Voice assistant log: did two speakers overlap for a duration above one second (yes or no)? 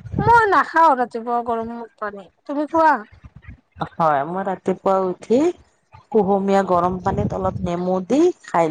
no